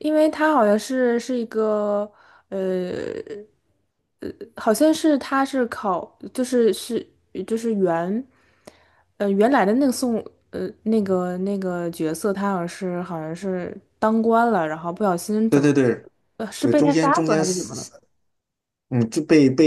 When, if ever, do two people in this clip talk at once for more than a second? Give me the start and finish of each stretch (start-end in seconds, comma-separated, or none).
16.6-17.9